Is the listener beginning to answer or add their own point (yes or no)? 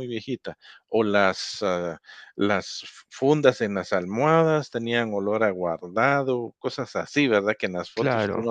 no